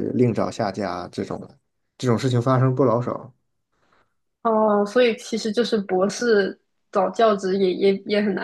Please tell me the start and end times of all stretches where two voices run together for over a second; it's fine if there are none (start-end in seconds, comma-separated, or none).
none